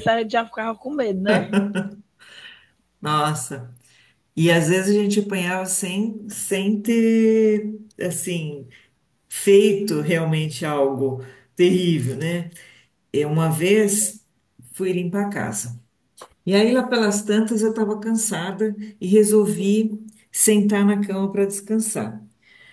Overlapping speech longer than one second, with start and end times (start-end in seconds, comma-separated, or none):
none